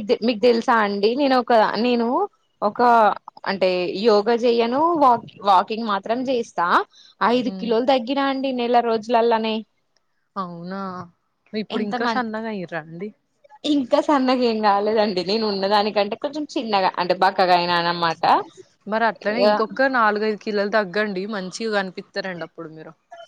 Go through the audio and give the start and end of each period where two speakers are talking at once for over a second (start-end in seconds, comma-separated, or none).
none